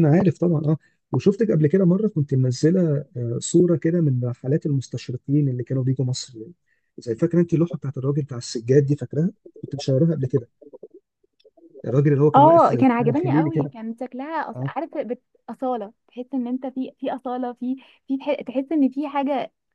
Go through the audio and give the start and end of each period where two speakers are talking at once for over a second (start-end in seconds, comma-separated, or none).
12.3-13.7